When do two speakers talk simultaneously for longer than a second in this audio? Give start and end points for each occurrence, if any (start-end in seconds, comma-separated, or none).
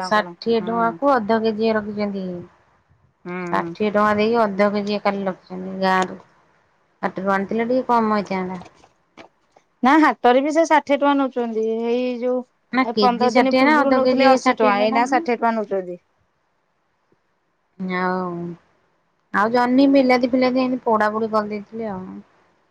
12.9-15.0